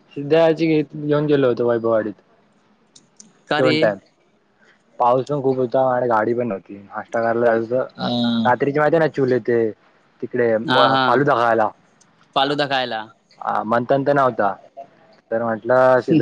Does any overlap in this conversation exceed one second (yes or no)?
no